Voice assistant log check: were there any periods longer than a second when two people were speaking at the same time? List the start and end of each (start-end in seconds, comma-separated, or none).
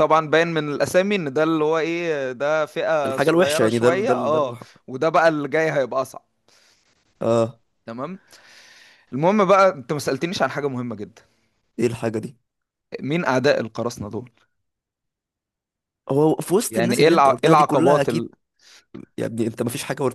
3.0-4.6, 16.7-18.3